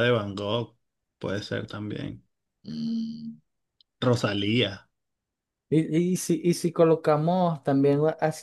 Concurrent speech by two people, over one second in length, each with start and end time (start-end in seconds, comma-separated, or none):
none